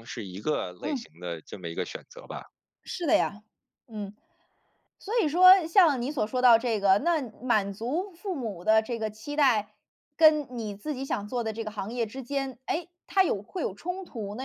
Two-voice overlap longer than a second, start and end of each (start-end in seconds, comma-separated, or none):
none